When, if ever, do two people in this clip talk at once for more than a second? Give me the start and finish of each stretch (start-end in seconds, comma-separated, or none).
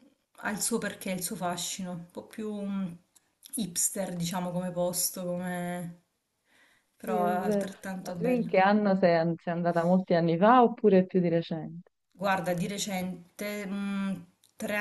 7.0-8.5